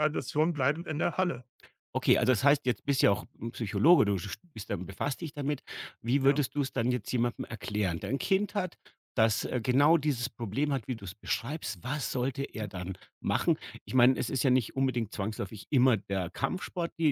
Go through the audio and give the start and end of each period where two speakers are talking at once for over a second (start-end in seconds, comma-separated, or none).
none